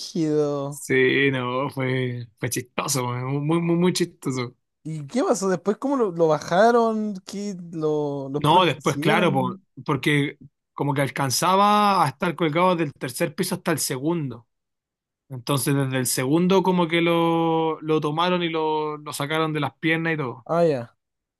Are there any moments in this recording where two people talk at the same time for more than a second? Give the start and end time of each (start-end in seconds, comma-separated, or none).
8.4-9.6